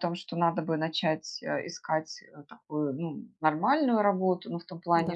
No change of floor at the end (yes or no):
yes